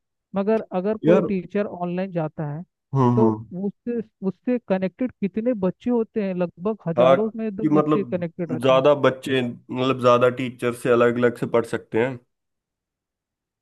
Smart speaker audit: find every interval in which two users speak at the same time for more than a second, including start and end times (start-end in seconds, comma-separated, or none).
7.0-8.8